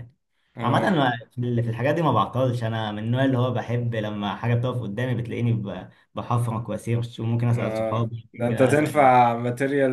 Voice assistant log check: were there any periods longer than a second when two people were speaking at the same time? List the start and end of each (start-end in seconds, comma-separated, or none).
7.5-9.1